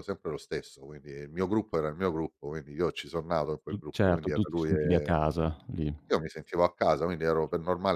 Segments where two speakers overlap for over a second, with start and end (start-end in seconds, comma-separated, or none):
3.7-5.1